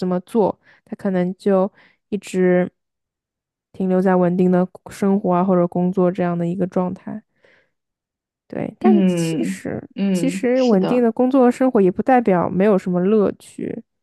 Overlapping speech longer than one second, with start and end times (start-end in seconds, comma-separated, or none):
8.8-11.1